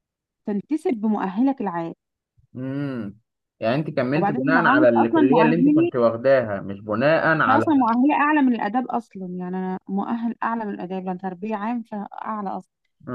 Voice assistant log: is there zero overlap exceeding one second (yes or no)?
no